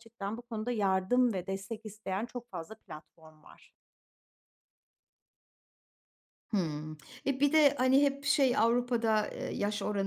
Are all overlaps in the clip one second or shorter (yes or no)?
yes